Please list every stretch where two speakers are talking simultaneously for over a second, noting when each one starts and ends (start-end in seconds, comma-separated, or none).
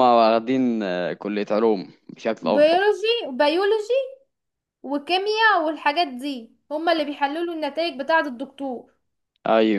none